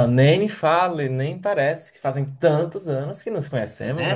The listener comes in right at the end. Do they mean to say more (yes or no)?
yes